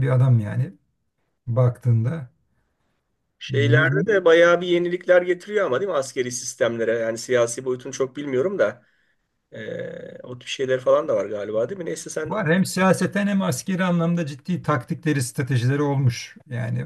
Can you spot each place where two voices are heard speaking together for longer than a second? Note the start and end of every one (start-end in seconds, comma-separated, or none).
none